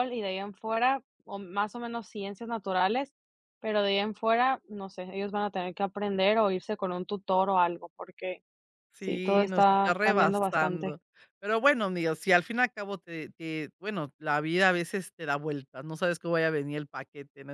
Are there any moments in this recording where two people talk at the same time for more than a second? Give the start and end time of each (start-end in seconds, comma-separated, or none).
9.0-11.0